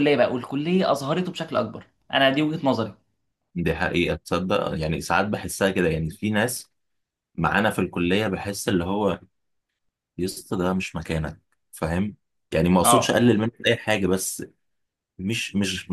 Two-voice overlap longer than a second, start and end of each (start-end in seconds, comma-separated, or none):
none